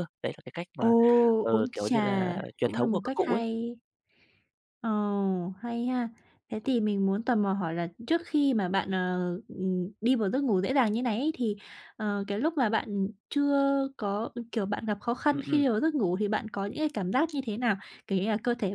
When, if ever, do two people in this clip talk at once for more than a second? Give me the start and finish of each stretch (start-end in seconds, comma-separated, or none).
1.5-3.4